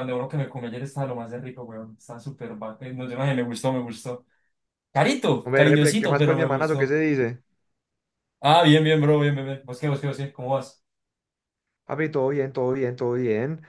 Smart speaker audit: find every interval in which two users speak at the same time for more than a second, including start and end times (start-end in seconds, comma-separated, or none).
5.4-7.0